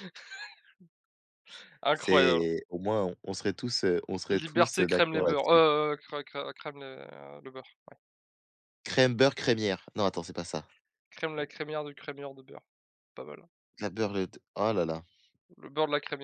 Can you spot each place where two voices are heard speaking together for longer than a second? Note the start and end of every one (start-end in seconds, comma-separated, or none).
4.3-5.6